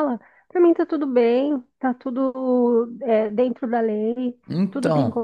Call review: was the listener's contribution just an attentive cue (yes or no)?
yes